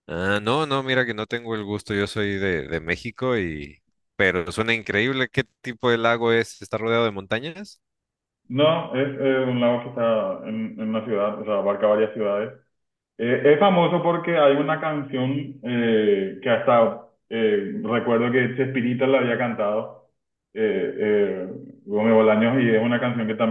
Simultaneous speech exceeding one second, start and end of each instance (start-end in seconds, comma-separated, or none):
none